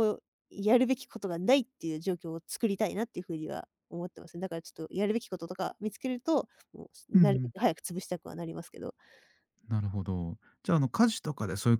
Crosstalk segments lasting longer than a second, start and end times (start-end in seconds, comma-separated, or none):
none